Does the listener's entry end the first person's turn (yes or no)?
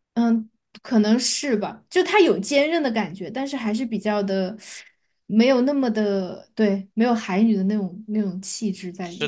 yes